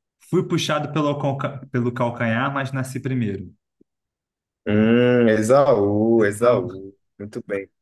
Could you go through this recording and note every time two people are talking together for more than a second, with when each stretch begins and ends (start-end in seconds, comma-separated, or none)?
none